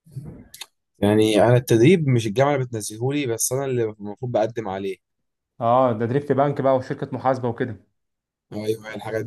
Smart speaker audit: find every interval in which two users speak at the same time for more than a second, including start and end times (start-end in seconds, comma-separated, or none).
none